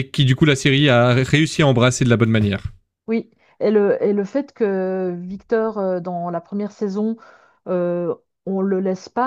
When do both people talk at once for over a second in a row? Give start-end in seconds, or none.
none